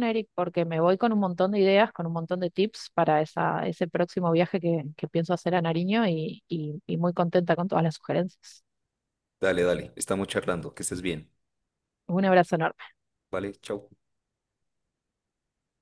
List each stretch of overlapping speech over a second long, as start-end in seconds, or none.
none